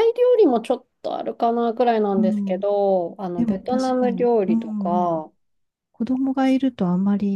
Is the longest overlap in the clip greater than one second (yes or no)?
yes